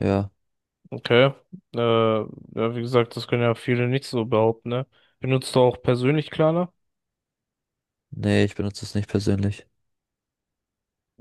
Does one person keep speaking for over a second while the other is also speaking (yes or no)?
no